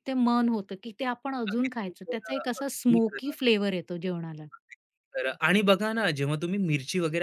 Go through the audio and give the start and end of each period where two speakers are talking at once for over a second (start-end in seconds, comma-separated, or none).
1.5-3.4